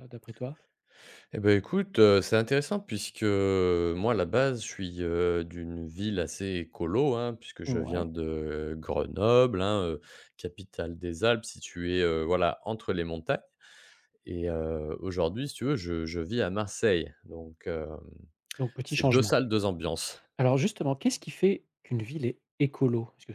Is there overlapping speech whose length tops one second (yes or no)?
no